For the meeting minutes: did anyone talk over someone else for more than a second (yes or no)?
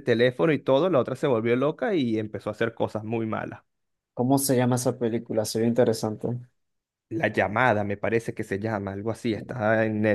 no